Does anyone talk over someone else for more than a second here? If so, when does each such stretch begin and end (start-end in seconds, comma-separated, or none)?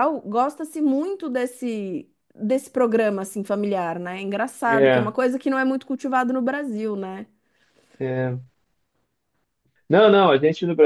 none